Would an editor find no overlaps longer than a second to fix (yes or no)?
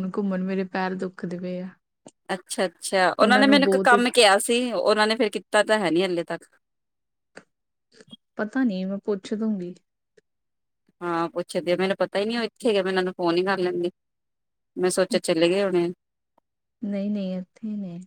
yes